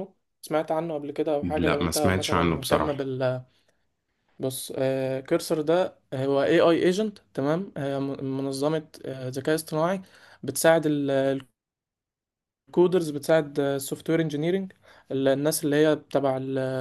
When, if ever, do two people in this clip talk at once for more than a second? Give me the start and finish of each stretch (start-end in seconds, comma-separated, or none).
1.4-3.1